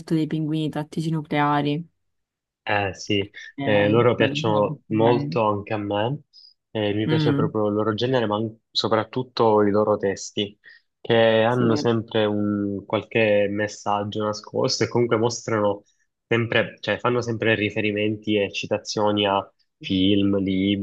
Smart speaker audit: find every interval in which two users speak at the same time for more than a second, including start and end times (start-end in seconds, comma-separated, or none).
3.6-5.4